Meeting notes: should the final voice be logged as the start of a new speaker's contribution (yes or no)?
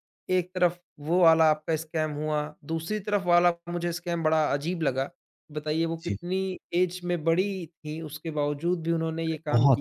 yes